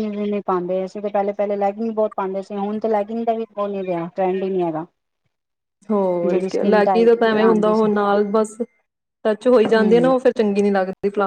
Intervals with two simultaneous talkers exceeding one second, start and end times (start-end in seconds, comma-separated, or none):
6.3-7.9